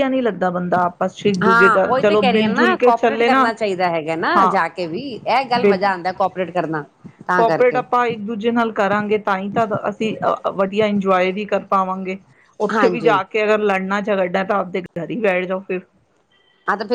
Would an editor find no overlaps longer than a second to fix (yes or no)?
no